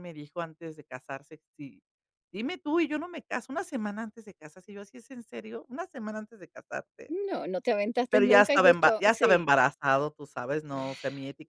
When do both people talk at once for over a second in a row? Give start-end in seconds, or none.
8.1-9.5